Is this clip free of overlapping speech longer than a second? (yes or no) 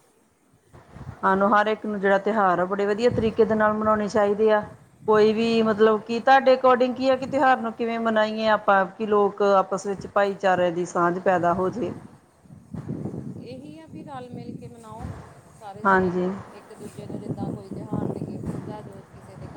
yes